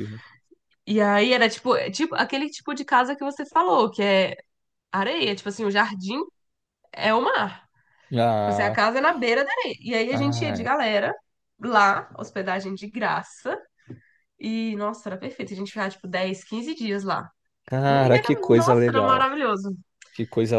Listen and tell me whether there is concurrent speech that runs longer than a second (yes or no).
yes